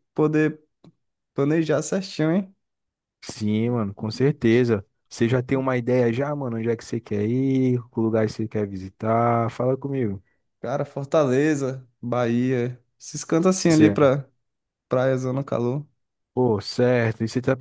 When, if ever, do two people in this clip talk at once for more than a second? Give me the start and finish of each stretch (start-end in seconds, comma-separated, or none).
none